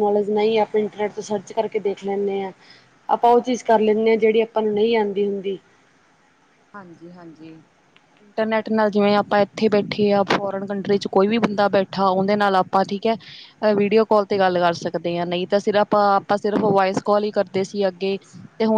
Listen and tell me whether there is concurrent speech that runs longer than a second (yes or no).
no